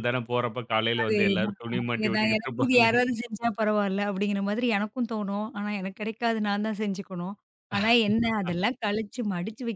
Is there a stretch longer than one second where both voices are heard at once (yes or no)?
yes